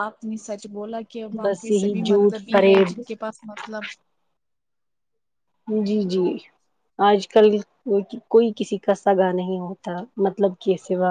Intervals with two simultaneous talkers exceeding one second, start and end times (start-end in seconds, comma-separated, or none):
1.4-3.0